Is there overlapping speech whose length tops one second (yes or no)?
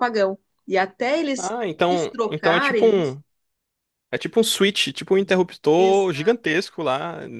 yes